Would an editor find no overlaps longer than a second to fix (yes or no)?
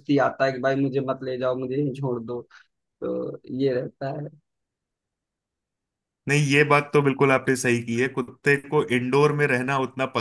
yes